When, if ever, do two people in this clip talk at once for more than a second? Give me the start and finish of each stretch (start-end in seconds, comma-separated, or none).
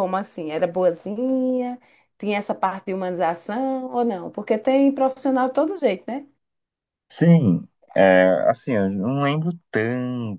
none